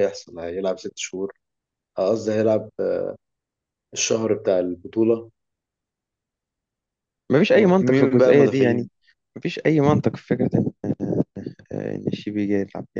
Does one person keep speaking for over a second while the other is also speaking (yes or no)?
yes